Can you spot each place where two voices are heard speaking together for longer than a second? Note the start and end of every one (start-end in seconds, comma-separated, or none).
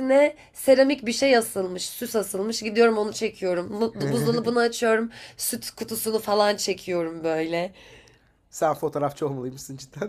none